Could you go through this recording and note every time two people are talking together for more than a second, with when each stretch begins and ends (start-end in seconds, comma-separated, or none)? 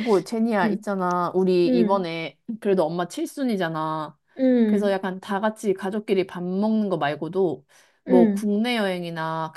none